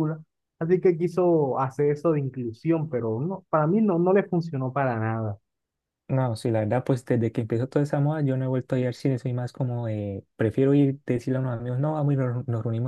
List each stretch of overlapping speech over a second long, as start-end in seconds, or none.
none